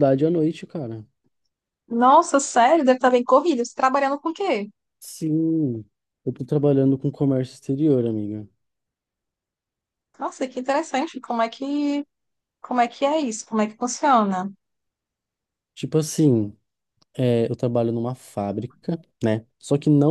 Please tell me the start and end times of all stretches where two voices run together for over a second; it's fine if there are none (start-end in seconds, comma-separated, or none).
none